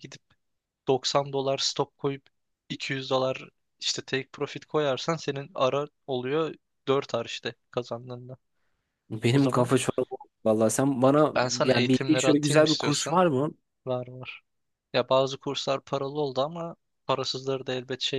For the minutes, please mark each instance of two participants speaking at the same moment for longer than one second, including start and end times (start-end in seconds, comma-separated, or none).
11.3-13.2